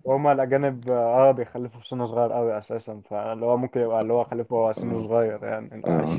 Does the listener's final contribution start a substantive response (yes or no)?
yes